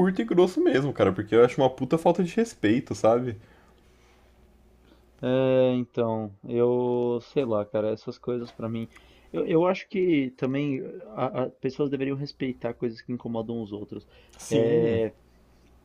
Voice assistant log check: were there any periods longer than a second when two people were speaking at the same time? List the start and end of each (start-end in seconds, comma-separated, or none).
none